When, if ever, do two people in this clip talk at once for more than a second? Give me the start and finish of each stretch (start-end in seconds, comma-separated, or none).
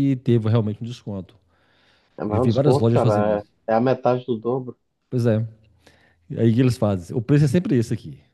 2.3-3.5